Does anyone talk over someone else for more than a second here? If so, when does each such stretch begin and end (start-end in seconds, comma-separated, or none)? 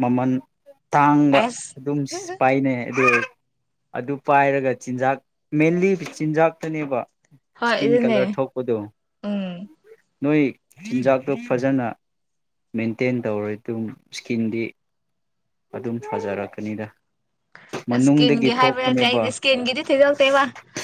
17.9-19.2